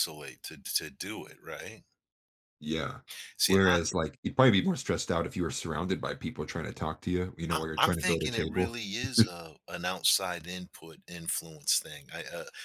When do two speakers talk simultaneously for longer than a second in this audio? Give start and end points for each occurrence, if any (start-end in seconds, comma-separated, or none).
7.5-8.7